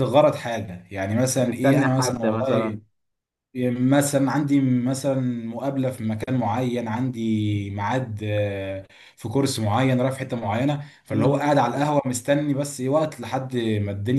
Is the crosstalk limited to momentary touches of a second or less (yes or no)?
no